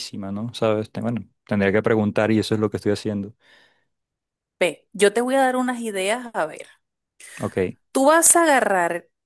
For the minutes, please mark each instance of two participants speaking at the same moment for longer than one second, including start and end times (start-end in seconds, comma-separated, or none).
none